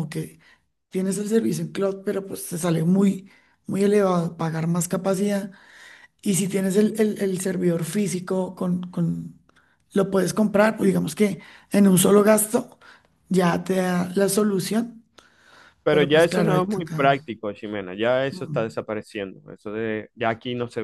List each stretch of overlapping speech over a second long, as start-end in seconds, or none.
15.9-17.1